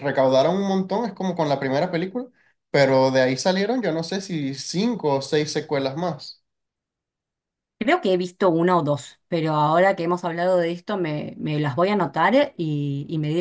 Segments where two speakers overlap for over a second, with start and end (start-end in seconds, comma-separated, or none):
none